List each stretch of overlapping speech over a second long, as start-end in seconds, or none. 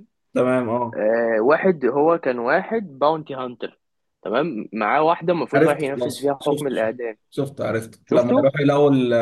5.5-6.9